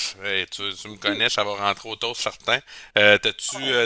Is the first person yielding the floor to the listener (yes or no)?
no